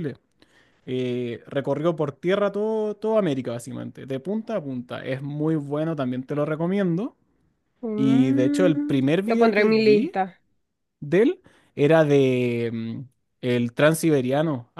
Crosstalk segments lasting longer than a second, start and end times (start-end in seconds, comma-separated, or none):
8.0-10.2